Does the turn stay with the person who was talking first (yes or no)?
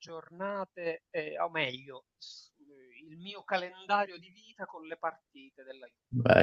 no